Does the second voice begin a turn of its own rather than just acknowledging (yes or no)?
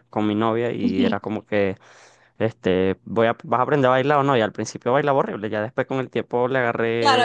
yes